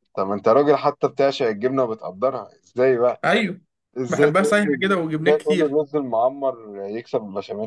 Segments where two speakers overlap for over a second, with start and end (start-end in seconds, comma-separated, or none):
4.1-5.8